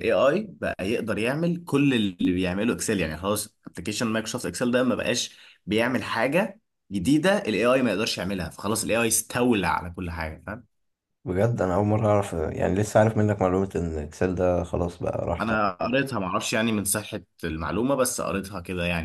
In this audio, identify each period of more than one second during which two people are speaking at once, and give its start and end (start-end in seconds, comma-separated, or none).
none